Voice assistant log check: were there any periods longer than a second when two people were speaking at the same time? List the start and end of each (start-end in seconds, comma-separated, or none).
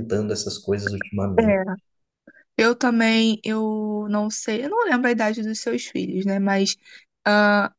none